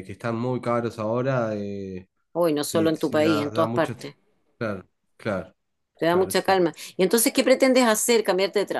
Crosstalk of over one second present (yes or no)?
yes